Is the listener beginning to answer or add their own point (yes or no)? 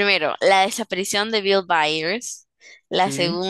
no